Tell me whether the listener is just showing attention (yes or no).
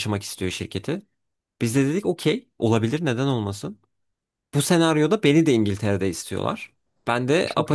yes